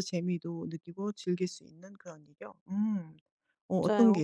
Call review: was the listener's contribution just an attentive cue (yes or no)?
no